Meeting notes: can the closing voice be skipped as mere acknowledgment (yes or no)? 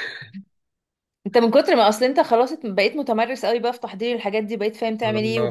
yes